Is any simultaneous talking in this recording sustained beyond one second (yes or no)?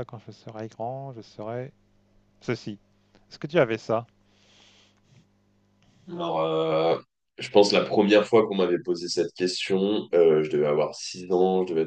no